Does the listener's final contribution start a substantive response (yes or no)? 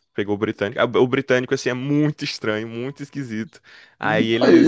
no